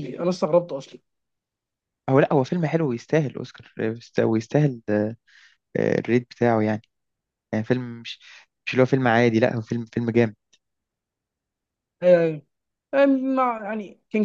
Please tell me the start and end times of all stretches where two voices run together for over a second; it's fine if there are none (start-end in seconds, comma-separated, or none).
none